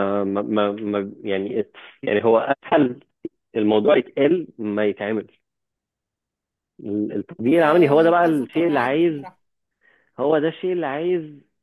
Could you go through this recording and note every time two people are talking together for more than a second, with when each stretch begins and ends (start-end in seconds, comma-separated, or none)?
7.6-9.2